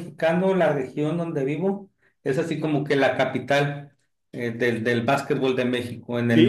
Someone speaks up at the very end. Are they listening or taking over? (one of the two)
listening